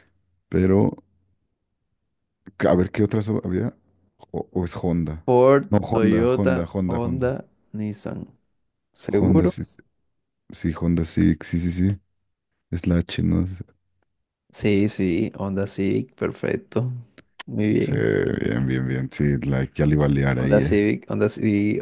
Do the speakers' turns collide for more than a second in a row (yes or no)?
yes